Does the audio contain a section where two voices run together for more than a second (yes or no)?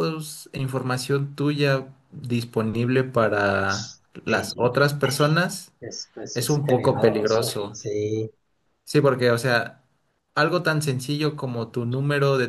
yes